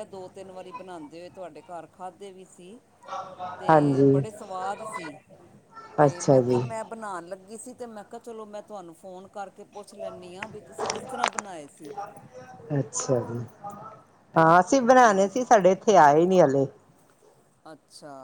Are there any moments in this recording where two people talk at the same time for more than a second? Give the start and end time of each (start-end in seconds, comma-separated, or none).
none